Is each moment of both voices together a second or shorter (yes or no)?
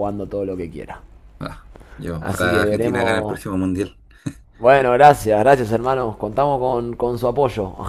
no